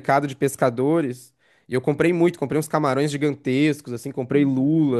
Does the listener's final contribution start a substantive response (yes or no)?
no